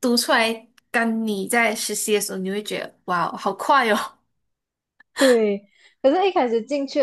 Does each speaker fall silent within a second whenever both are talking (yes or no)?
yes